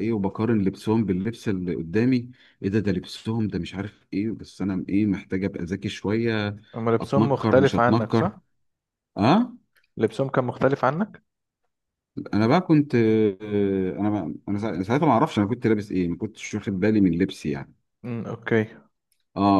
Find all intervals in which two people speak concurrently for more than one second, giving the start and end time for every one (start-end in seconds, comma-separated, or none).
7.0-8.4